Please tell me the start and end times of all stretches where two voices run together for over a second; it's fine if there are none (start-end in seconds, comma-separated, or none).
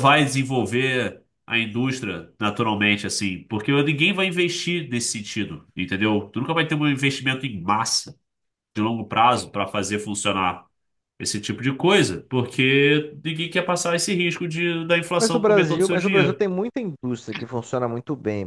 15.2-16.4